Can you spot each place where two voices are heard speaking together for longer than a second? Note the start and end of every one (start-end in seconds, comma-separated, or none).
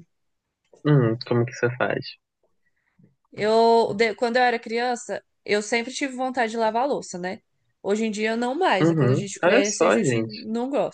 8.8-10.3